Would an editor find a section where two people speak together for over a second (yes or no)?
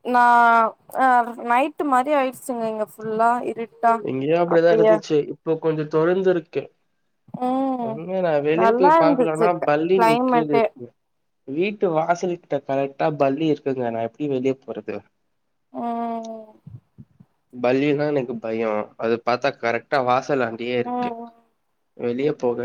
yes